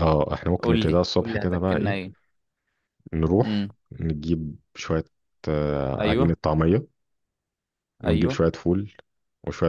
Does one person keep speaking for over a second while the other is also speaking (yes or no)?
yes